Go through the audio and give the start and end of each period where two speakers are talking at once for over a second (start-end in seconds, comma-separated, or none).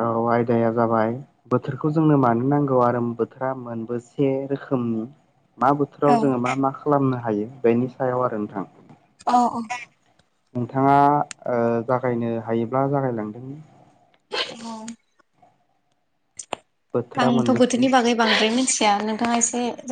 none